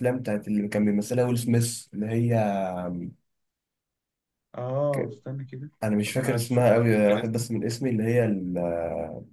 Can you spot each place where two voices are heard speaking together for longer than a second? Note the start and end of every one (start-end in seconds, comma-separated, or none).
5.8-7.4